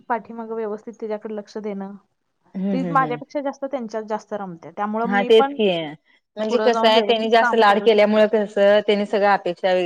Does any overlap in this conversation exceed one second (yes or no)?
yes